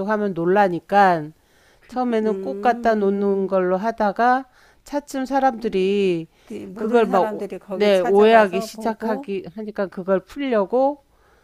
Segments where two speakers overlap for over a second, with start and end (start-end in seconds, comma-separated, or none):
2.2-3.5, 6.8-9.3